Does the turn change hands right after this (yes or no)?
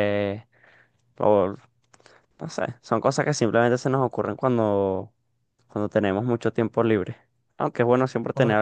no